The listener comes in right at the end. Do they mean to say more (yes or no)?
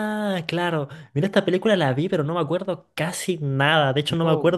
no